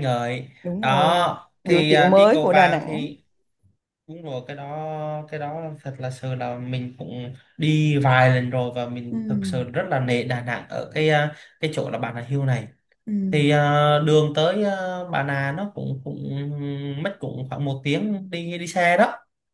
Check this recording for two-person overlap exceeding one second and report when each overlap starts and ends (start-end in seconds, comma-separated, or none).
0.6-3.1